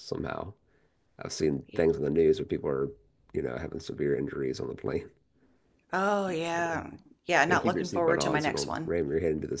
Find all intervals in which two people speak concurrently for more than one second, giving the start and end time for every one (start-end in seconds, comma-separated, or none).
7.5-8.9